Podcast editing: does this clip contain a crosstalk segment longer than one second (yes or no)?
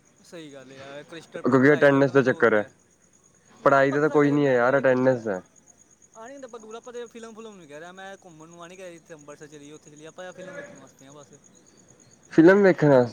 yes